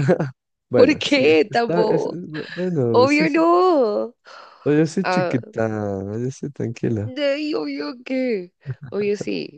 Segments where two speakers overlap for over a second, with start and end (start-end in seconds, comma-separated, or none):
0.7-2.2